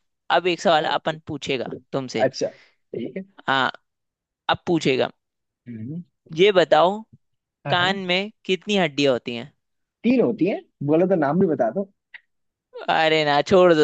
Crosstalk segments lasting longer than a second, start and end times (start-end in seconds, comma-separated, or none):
none